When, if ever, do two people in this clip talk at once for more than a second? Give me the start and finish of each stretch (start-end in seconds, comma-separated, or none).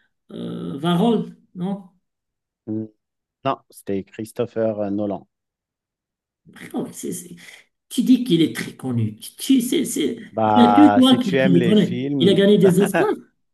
10.3-12.4